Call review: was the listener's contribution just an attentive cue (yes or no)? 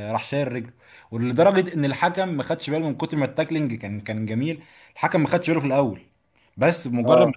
yes